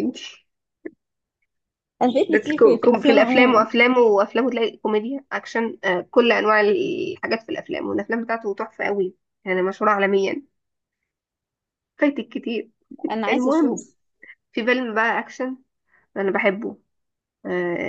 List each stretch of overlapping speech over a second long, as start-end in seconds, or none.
2.3-3.7